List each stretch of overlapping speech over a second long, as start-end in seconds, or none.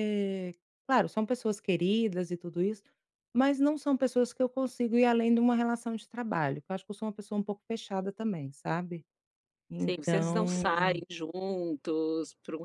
9.8-11.0